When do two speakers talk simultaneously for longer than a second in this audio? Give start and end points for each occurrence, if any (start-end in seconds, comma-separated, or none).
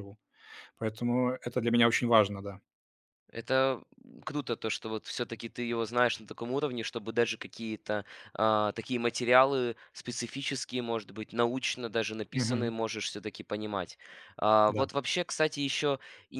none